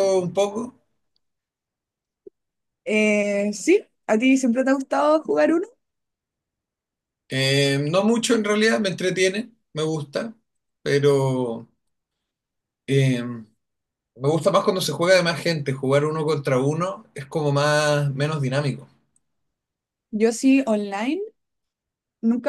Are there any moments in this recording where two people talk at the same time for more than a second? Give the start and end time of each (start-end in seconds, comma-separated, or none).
none